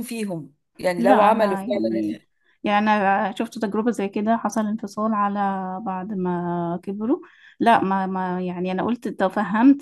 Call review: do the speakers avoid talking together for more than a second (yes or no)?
no